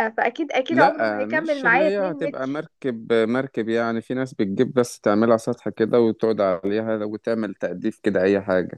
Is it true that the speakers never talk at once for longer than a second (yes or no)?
no